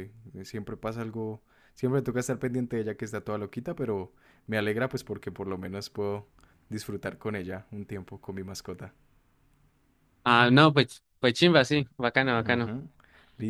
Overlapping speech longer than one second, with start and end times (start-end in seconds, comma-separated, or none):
none